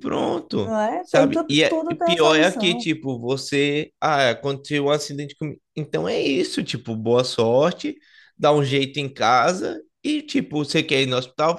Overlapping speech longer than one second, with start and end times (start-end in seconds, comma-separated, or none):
0.6-2.9